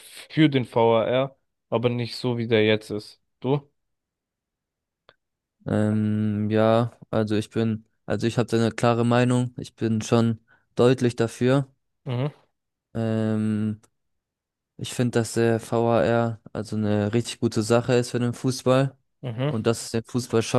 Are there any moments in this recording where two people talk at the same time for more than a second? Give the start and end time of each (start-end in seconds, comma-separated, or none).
none